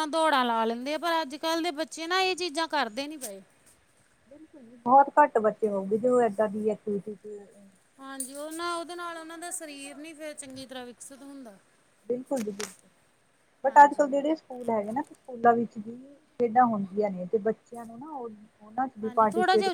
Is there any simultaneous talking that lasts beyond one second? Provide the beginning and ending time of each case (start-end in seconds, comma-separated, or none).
none